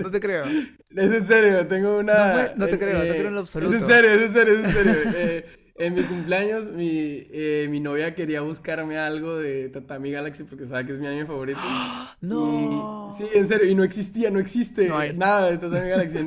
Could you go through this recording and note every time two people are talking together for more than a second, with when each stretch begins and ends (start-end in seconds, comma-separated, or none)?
2.1-4.0, 12.3-13.5